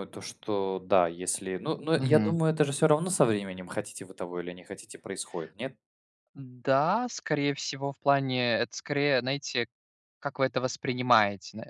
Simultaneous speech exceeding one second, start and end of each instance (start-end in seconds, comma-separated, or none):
none